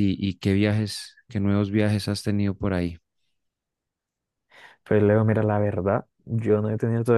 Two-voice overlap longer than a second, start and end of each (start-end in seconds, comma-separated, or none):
none